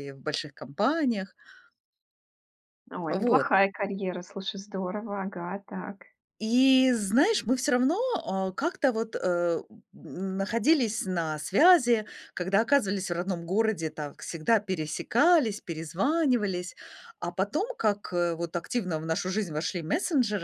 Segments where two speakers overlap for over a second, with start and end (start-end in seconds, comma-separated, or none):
none